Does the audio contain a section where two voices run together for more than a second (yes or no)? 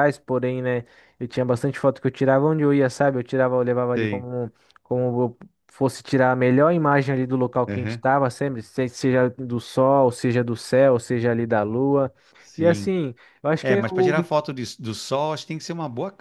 no